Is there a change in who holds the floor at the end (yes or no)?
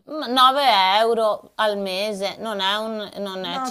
yes